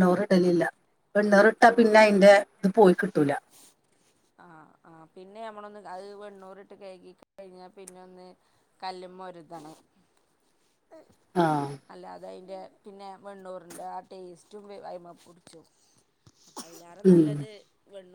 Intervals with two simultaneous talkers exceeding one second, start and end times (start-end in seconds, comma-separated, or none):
none